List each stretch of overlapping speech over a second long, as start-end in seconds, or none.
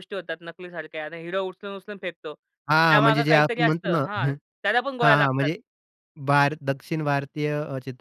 2.9-4.3